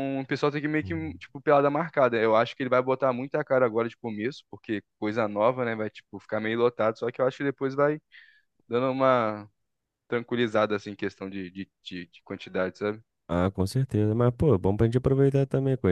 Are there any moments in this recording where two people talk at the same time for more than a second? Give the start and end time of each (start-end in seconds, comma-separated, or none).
none